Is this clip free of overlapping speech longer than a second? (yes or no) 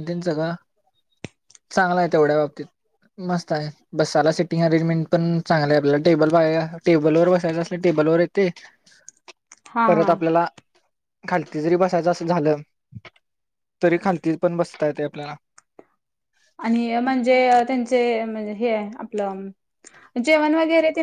yes